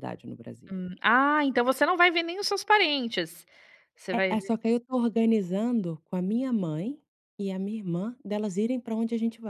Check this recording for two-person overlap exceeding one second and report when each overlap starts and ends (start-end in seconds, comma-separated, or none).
none